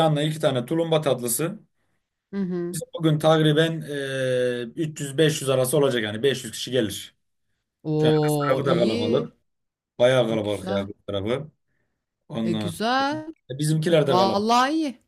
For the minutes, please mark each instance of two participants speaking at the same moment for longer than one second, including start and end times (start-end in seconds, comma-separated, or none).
8.0-9.3